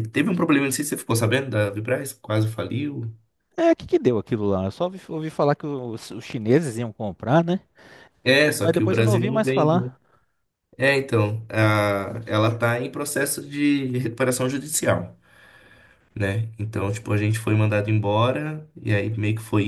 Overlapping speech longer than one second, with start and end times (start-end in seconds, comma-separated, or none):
8.5-9.9